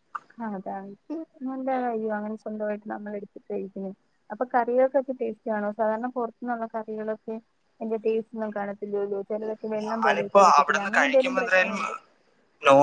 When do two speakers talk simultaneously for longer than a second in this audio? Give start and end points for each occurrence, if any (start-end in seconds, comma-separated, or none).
10.1-11.8